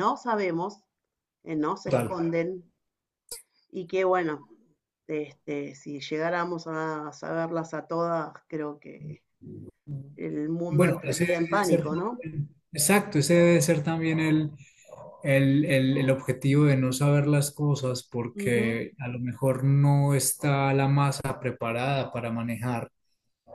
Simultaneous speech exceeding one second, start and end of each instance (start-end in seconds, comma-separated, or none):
10.7-12.2